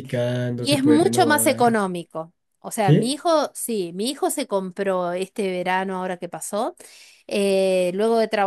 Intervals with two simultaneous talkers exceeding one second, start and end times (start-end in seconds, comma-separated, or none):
0.6-1.8